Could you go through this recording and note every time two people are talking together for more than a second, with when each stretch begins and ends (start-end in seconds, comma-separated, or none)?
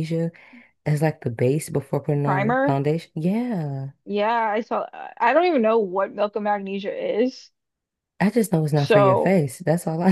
none